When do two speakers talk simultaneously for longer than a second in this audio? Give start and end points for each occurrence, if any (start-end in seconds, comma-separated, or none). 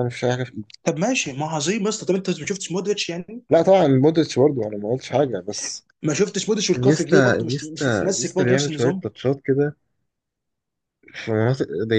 6.8-9.1